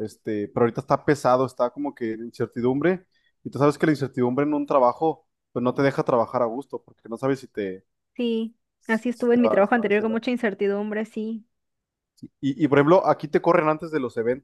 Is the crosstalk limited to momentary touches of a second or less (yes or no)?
no